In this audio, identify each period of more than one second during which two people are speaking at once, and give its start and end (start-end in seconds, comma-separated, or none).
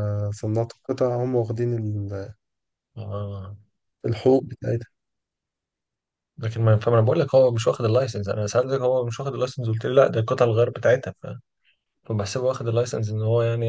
none